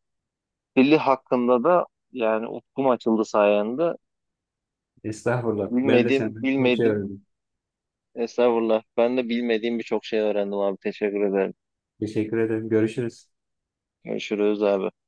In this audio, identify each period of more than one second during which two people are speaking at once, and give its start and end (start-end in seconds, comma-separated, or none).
5.7-7.0